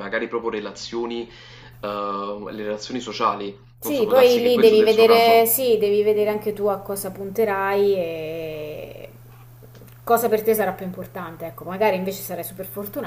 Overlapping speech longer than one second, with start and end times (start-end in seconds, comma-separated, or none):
3.8-5.5